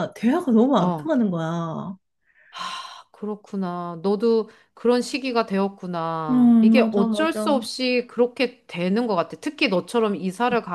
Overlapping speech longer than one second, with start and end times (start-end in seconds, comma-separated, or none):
6.3-7.6